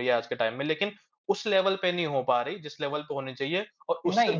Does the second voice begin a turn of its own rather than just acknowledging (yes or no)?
yes